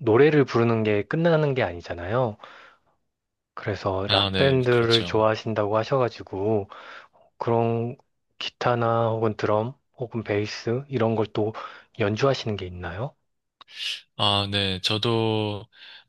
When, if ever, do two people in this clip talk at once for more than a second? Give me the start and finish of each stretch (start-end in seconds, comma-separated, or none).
4.0-5.2